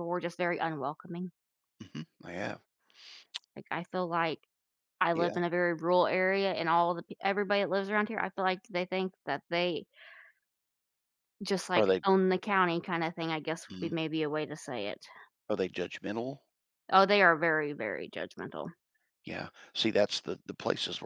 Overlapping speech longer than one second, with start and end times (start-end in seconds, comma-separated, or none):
none